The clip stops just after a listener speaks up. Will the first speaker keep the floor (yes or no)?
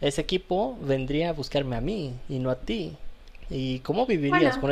yes